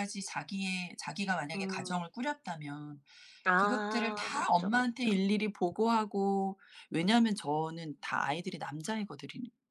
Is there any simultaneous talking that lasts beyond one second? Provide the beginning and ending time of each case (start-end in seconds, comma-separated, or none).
3.5-5.1